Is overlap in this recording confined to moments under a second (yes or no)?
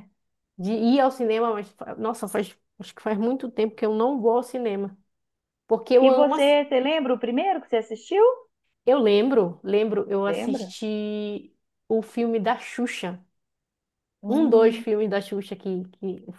yes